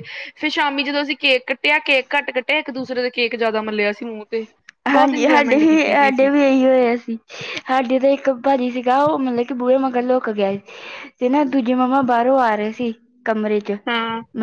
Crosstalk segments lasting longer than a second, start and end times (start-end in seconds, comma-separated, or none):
4.9-6.3